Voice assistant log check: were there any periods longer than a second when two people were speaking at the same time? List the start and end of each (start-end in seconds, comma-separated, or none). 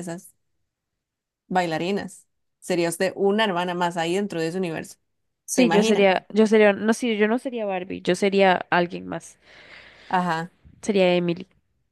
none